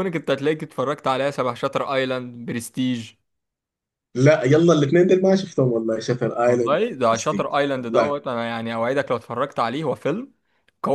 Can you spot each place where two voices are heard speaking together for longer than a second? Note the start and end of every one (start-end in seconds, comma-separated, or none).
6.5-8.1